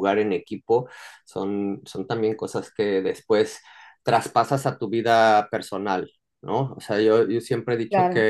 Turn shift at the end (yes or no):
no